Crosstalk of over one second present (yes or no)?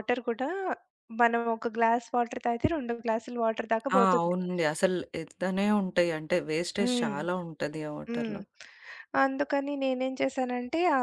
no